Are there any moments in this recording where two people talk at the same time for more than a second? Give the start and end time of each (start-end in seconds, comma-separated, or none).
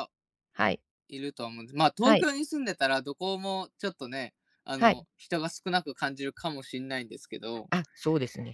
none